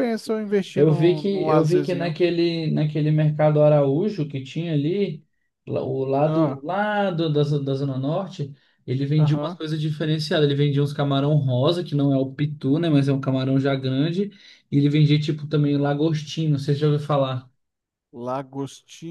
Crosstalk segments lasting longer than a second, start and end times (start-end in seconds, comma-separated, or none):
0.7-2.2